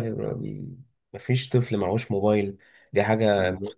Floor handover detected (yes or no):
no